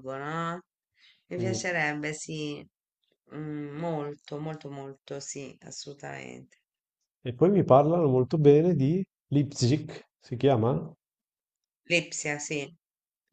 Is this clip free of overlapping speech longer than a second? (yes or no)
yes